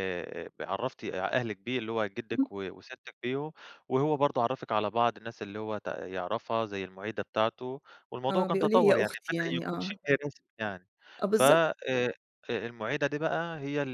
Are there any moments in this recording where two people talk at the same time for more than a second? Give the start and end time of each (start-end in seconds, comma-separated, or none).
8.3-10.0